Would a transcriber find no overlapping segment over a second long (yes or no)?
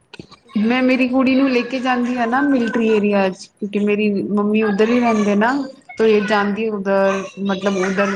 no